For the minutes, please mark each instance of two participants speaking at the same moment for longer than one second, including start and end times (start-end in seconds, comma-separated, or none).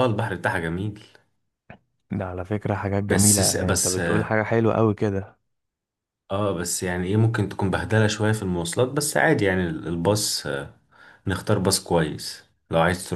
3.1-4.3